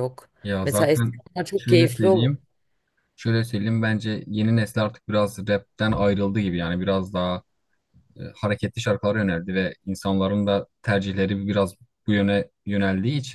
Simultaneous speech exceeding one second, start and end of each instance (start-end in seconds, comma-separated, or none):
0.7-2.3